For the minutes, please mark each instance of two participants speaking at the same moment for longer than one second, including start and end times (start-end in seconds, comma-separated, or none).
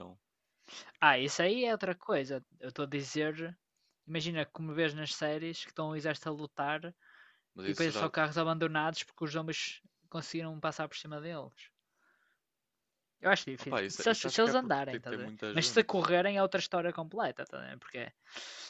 13.6-16.0